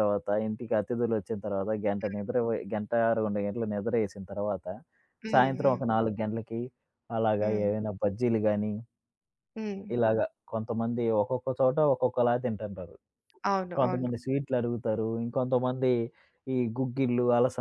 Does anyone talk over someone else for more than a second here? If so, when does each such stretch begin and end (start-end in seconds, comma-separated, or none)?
none